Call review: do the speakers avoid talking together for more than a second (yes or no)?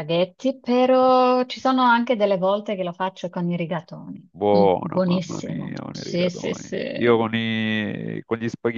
no